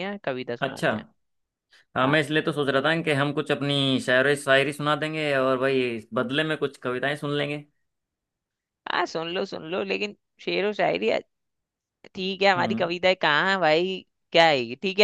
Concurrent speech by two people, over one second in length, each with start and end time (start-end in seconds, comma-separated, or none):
none